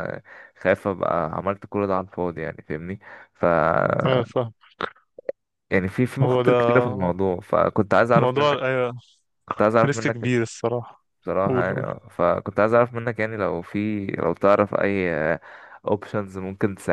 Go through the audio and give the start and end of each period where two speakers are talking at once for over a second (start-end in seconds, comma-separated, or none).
none